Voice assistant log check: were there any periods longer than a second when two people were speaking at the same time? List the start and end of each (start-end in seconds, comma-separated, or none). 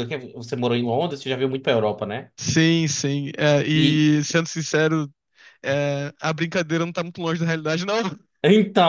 none